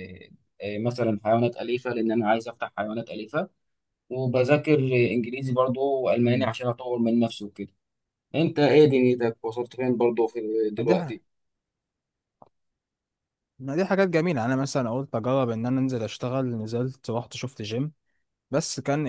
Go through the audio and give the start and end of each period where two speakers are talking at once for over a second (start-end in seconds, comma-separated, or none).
none